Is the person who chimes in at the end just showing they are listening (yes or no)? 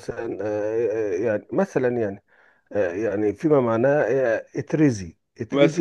yes